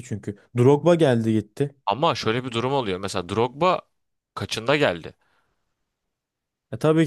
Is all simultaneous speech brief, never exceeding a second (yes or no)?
yes